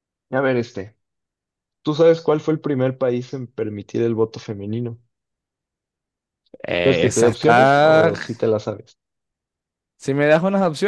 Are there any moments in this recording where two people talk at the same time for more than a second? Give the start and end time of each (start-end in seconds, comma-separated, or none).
6.8-8.1